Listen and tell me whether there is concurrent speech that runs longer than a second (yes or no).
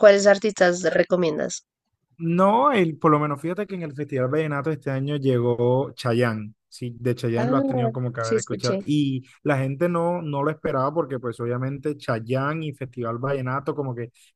yes